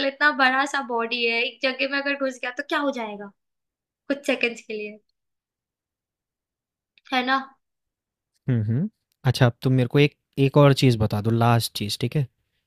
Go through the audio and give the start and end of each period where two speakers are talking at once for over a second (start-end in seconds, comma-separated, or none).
none